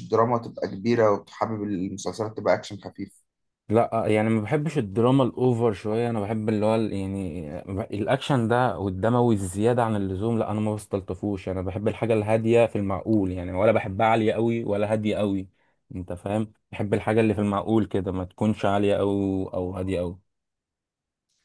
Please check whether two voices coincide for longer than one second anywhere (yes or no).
no